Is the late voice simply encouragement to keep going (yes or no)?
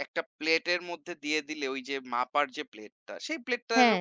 yes